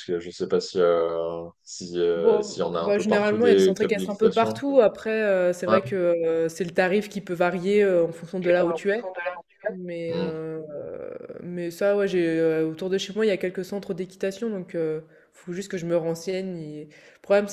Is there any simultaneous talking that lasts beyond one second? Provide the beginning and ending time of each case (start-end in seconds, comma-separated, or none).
2.1-4.6